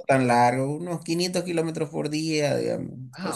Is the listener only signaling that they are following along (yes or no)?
no